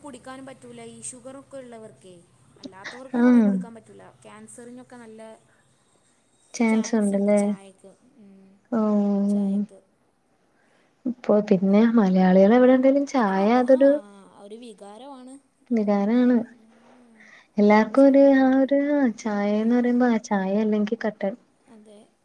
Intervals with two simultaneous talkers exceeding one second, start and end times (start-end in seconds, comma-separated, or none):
none